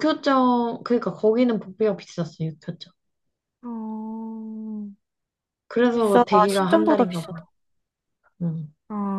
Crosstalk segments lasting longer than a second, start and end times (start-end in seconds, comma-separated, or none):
6.0-7.5